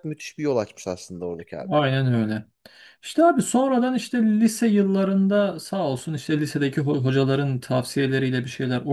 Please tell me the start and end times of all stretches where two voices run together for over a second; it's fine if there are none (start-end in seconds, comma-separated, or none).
none